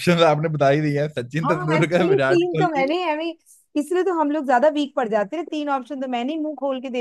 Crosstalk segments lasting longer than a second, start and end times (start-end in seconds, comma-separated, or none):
1.4-2.9